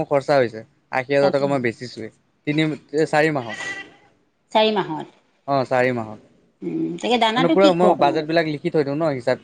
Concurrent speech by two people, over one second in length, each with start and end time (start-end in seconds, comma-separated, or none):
6.6-8.3